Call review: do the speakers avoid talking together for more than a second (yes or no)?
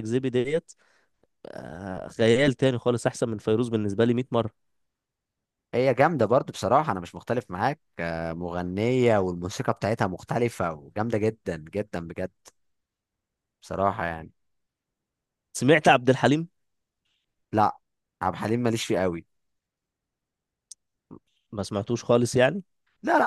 yes